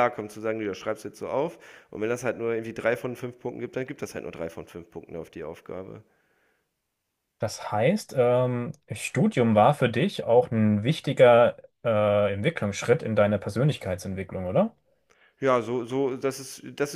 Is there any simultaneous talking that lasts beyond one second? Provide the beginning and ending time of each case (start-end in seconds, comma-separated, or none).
none